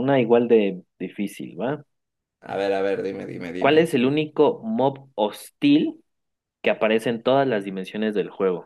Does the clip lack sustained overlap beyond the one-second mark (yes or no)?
yes